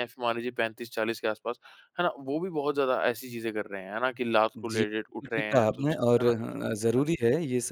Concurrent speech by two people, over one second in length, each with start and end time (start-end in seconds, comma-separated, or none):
4.6-6.3